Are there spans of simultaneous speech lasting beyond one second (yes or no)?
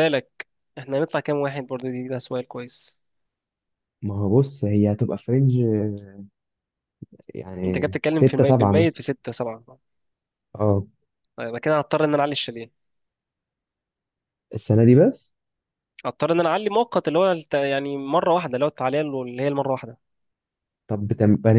yes